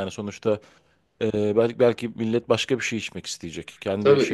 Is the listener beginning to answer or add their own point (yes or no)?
yes